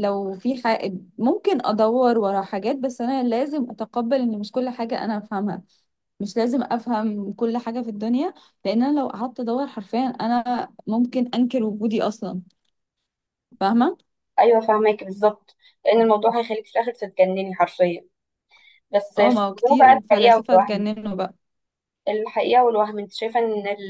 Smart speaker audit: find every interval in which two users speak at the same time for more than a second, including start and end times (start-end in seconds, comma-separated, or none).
19.2-20.9